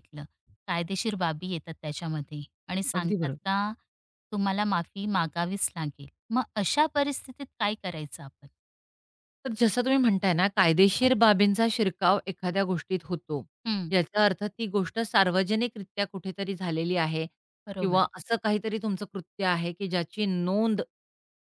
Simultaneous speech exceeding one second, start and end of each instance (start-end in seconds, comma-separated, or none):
none